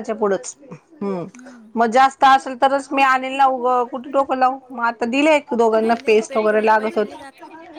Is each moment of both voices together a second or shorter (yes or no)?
no